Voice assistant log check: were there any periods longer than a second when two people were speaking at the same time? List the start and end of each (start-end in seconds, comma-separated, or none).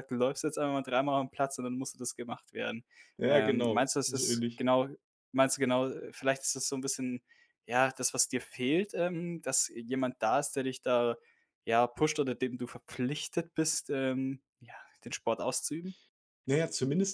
3.3-4.6